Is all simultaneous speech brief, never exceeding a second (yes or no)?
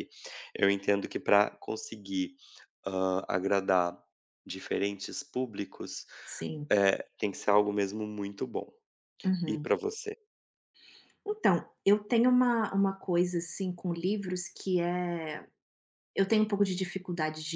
yes